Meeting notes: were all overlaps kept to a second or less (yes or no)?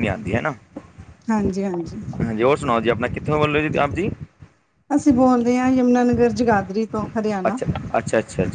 yes